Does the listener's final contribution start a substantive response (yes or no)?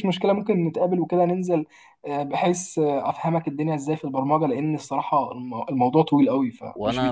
yes